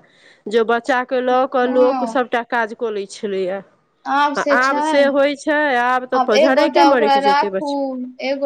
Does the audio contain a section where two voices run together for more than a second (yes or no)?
yes